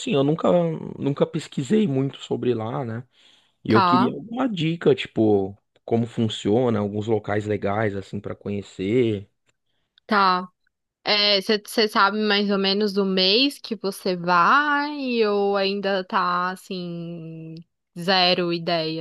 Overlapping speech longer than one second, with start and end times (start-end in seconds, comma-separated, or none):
none